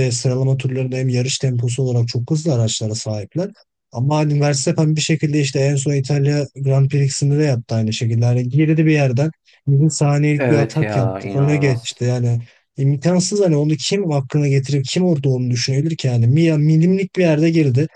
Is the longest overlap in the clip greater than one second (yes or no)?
yes